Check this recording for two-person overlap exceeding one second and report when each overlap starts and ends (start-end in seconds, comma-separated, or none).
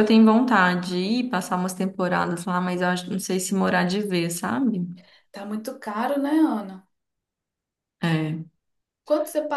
none